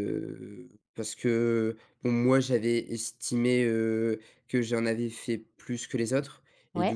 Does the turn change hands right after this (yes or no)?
no